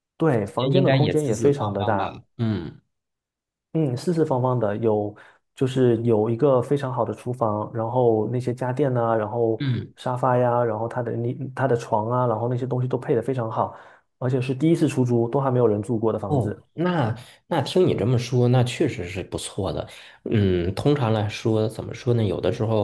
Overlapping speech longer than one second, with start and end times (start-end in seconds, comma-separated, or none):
0.6-2.2